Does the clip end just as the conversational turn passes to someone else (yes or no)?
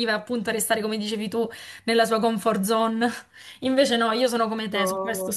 no